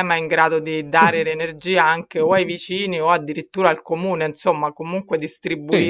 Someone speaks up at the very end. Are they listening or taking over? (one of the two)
taking over